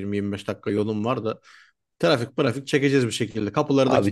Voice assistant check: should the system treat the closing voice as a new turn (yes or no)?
yes